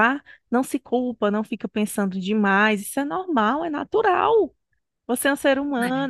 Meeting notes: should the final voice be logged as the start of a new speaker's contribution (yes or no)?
no